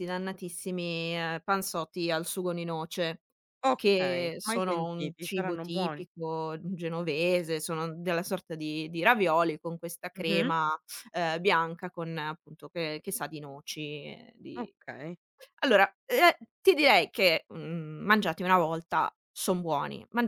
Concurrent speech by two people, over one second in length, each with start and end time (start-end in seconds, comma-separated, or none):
3.7-6.1